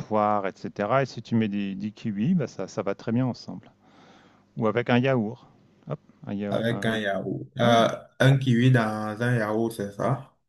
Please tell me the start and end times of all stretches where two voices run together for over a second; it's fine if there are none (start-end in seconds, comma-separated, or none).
none